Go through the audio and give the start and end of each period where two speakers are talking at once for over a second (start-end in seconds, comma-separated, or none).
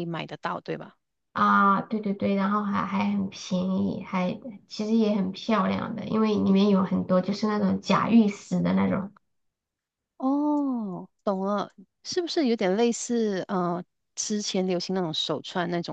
none